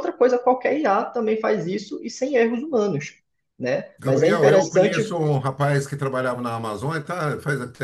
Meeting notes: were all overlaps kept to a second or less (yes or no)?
no